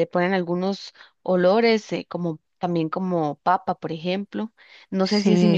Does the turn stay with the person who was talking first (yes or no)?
no